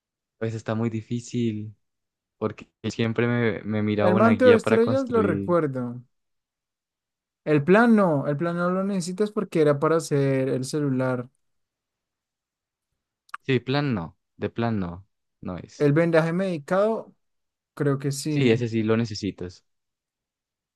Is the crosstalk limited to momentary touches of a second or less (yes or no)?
no